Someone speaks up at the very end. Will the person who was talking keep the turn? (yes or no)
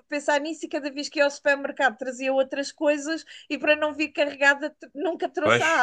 no